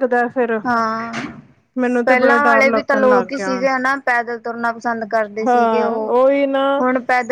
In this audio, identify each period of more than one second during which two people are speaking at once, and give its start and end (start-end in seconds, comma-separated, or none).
2.0-3.6